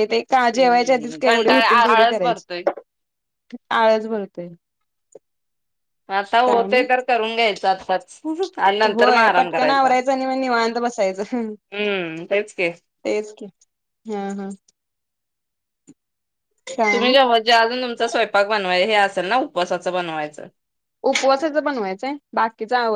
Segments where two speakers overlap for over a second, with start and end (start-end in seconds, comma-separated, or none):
0.6-2.6